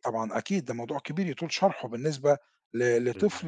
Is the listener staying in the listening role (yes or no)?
yes